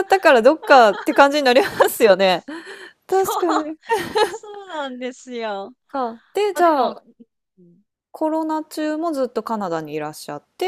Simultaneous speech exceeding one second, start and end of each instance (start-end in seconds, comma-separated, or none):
none